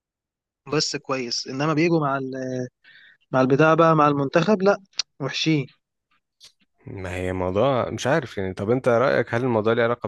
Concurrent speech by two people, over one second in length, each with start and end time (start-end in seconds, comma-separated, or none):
none